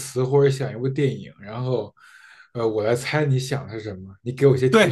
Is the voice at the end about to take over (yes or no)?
yes